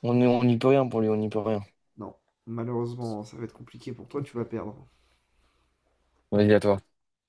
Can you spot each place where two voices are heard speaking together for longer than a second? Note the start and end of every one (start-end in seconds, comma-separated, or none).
none